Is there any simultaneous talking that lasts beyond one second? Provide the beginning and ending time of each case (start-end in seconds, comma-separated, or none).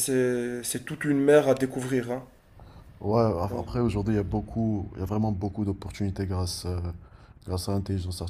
none